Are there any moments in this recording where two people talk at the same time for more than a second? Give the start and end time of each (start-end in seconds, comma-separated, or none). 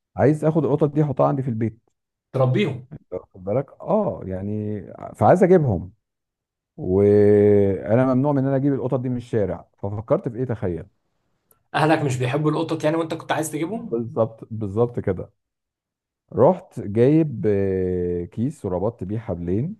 none